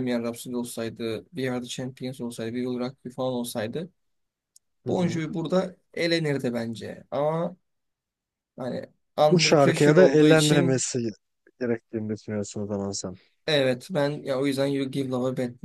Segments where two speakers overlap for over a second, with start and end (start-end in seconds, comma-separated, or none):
9.3-10.8